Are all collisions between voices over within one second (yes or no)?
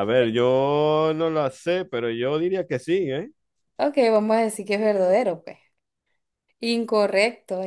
yes